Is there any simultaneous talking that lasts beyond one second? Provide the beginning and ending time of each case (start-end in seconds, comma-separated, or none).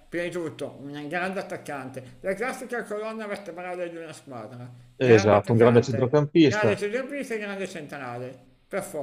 5.0-6.8